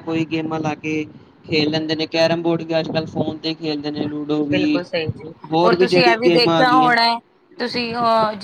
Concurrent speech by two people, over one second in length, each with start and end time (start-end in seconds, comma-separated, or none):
5.5-6.9